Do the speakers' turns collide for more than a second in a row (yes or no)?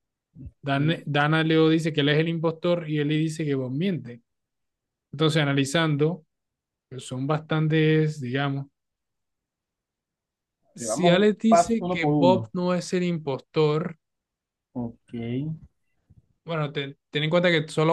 yes